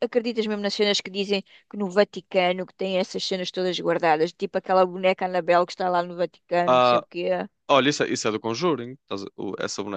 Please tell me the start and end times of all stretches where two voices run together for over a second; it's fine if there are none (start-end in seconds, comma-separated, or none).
none